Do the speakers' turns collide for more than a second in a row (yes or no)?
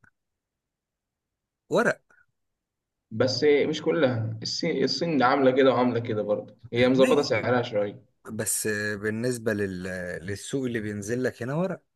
no